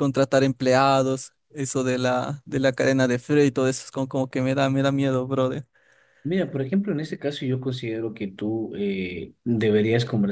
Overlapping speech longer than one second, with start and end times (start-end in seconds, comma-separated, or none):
none